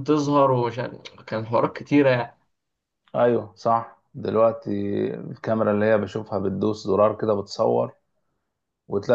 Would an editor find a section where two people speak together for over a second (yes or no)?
no